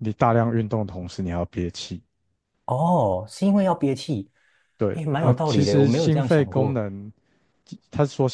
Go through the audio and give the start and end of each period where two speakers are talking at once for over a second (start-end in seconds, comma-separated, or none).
4.9-6.8